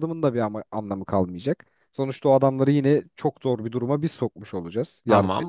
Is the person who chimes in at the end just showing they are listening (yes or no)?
no